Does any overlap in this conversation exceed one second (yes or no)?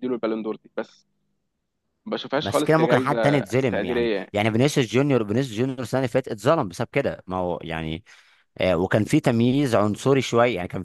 yes